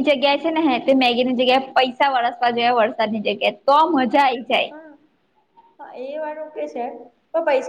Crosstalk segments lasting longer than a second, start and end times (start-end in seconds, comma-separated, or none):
none